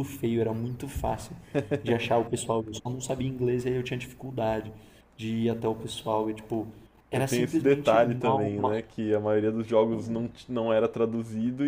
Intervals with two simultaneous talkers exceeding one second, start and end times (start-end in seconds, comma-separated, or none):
7.1-8.5